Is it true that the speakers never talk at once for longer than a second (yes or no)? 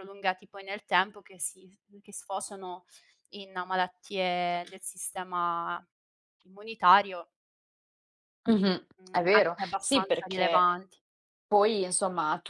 no